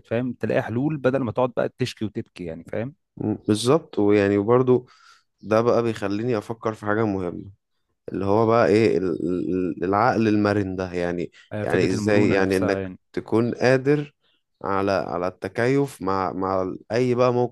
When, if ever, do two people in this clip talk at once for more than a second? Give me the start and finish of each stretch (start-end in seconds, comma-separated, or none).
11.5-13.0